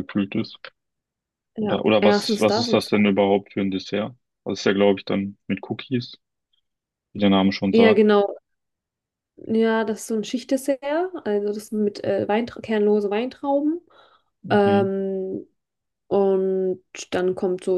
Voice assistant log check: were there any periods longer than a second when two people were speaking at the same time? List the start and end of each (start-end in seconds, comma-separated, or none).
1.6-3.1